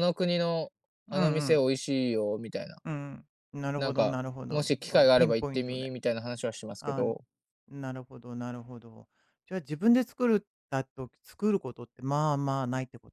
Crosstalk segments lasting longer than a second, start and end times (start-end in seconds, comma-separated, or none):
3.8-5.9